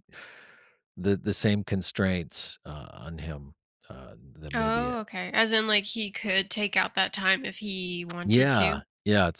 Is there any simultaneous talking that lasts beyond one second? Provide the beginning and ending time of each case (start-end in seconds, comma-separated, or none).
none